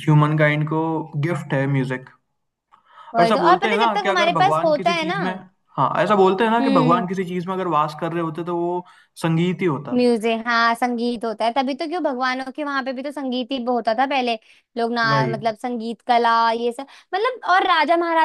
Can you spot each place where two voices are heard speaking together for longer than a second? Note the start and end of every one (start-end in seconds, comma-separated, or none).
3.2-5.2